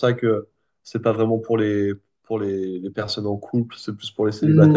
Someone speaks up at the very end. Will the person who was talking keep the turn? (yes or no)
no